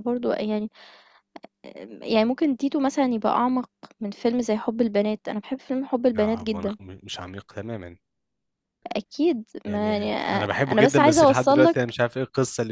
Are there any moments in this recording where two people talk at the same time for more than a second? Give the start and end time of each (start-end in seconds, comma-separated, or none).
9.7-12.0